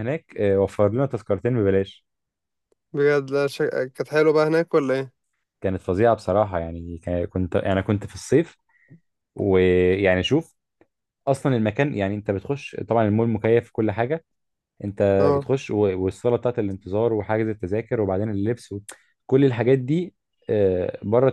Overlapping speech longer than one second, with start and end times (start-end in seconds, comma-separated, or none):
none